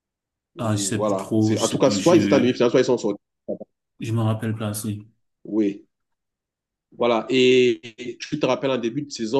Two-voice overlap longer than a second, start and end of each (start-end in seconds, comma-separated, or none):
0.6-2.6